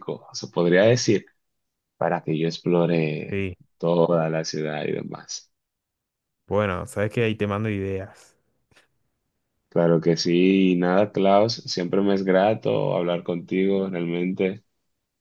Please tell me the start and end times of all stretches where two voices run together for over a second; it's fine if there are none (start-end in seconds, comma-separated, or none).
none